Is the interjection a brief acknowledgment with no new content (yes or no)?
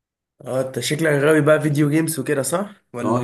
no